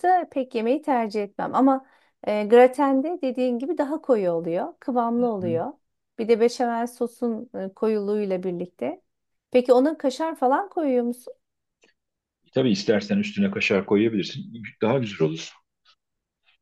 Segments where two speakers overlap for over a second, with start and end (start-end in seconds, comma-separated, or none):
none